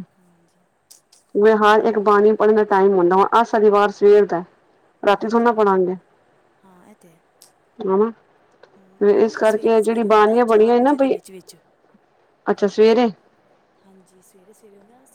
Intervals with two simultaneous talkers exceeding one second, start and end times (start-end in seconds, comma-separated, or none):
9.0-11.2